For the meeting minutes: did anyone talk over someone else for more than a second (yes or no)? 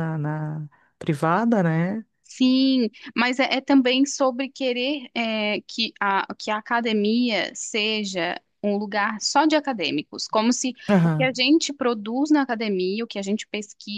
no